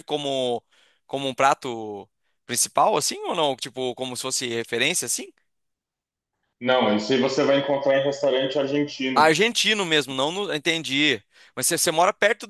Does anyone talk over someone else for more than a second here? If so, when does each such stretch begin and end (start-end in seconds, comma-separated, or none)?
none